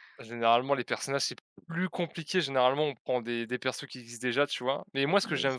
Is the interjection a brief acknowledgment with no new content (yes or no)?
yes